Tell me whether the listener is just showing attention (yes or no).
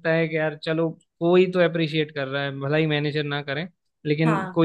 yes